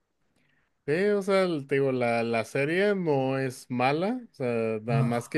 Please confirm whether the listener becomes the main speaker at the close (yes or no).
no